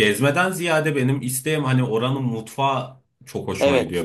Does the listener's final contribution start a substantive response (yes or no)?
yes